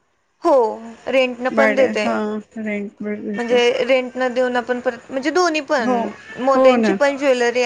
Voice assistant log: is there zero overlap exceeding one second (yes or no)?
yes